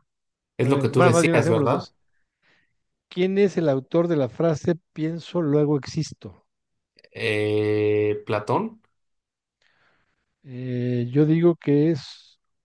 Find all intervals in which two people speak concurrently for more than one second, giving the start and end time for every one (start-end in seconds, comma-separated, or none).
0.6-1.9